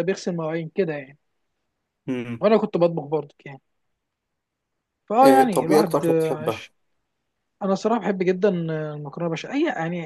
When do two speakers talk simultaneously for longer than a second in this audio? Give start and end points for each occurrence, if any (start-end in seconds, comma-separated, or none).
5.2-6.7